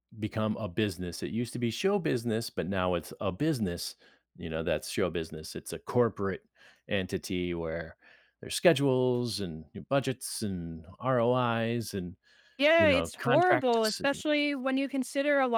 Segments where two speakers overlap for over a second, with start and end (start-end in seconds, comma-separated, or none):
12.8-14.2